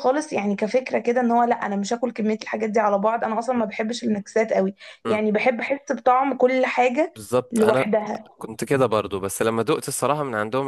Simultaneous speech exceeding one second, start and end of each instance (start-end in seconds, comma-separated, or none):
none